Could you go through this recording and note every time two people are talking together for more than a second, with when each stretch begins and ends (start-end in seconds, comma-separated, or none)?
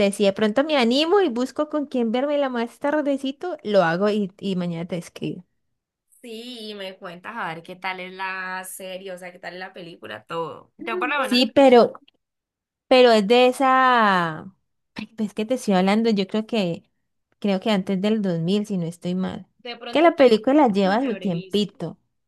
19.9-21.6